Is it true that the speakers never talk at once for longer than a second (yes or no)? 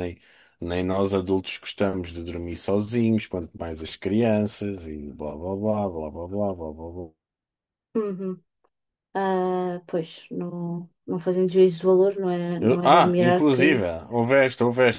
no